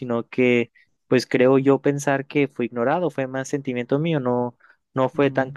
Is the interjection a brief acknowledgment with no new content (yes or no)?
yes